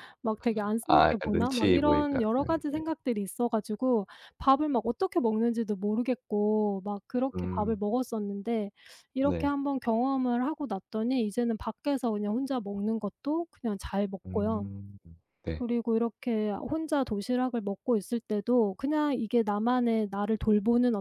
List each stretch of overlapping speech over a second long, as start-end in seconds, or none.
0.9-2.8